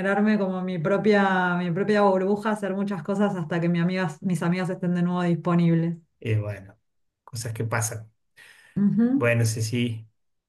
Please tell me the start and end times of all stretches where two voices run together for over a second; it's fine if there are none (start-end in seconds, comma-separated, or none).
none